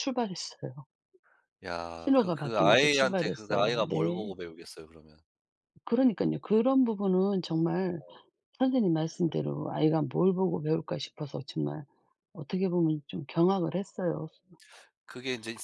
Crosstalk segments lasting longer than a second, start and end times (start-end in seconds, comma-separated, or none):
2.0-4.3